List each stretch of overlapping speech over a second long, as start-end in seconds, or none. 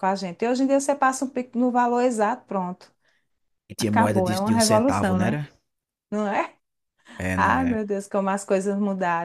3.8-5.4